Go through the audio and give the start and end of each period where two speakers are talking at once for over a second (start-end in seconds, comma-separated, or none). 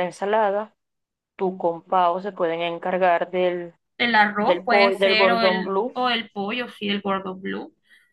4.4-6.0